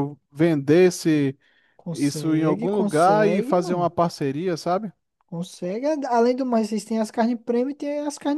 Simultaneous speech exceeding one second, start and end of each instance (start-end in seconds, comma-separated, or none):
1.9-3.9